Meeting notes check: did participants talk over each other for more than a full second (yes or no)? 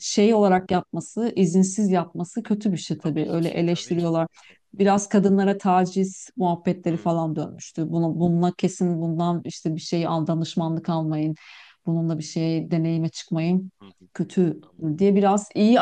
yes